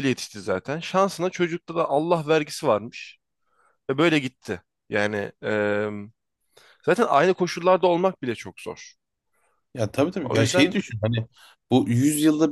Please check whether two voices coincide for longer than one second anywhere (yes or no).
no